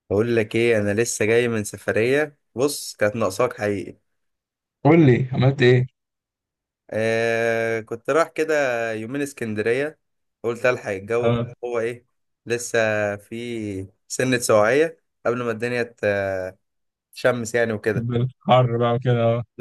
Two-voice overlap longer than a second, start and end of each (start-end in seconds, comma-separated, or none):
none